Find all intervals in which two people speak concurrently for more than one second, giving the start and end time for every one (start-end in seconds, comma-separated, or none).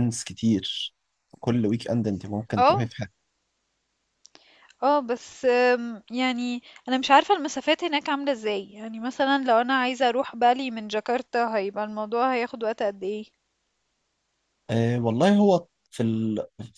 none